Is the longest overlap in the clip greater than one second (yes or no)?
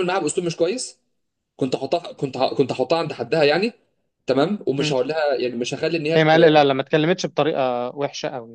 no